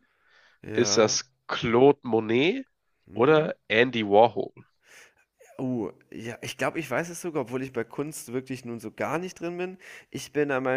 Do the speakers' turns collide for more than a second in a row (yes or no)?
no